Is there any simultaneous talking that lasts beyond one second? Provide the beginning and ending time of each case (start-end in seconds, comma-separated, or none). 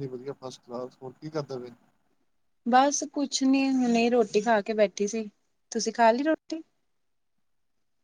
none